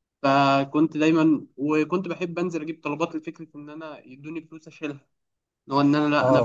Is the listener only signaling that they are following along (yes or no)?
no